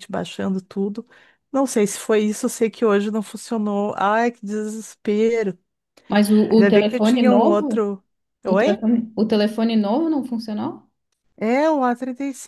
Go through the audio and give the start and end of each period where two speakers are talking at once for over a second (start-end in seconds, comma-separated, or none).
6.5-7.8